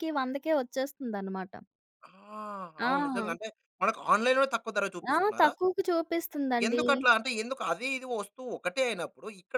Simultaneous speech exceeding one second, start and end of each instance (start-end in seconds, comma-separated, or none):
none